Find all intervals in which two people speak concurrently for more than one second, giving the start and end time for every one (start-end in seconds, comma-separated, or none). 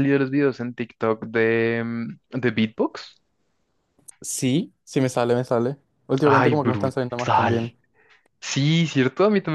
6.2-7.7